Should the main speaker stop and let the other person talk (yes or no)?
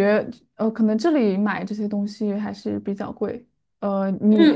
yes